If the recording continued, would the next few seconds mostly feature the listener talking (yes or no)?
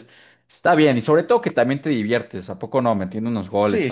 yes